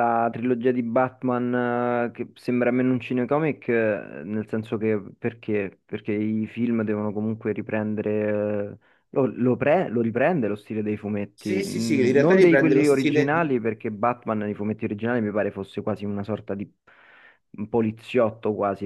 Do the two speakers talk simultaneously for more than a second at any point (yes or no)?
yes